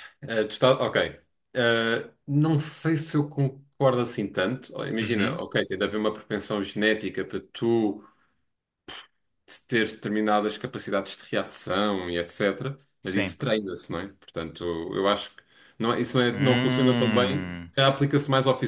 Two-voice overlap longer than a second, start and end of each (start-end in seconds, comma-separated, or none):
16.3-17.7